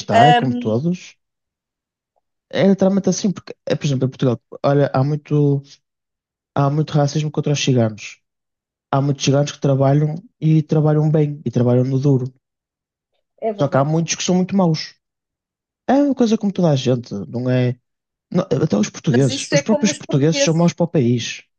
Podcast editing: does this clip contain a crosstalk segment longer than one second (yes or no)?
yes